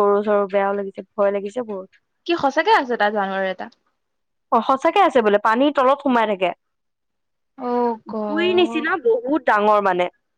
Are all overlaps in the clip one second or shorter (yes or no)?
yes